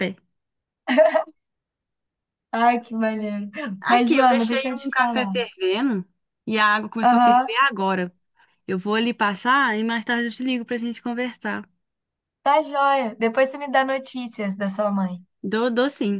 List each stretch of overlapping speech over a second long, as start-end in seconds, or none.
3.9-5.4